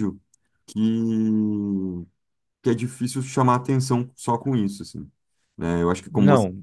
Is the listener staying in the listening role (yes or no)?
yes